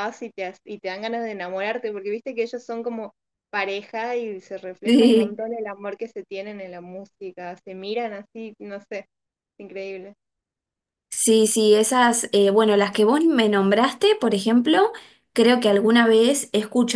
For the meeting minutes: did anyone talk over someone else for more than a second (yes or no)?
no